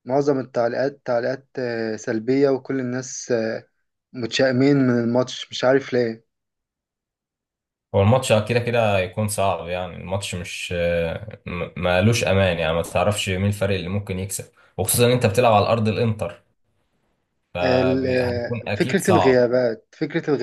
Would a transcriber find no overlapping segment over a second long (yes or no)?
no